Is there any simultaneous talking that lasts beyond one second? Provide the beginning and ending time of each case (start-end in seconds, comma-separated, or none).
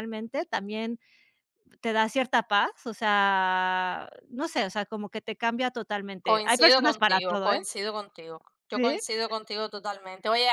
6.2-7.6